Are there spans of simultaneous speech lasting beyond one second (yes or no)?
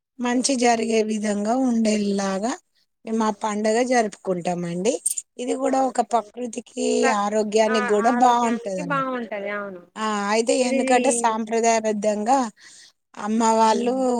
yes